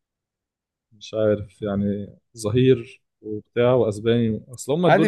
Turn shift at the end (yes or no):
yes